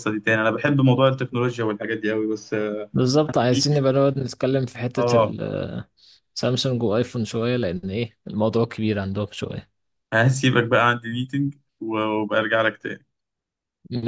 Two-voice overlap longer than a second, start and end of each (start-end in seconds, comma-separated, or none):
none